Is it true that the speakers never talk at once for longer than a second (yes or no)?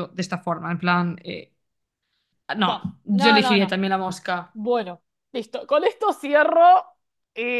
no